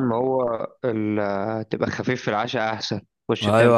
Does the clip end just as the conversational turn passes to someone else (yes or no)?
yes